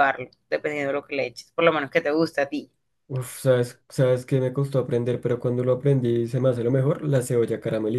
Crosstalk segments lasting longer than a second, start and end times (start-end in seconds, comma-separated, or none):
none